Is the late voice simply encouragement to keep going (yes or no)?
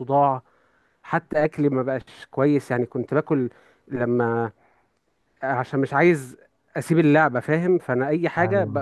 yes